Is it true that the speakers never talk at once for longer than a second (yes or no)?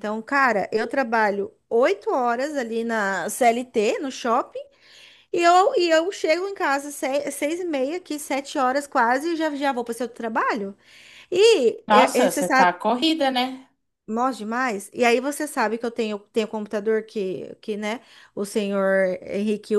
yes